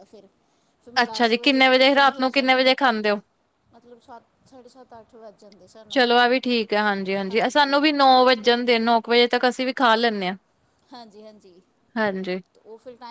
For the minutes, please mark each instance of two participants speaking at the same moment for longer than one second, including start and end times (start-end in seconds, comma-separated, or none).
1.0-2.6